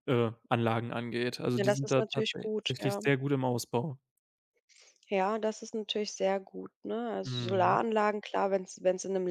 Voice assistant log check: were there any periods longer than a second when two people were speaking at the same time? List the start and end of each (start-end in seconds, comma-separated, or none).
1.6-3.0